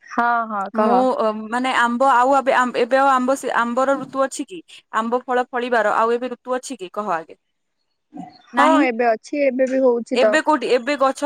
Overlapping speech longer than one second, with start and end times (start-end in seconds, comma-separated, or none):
none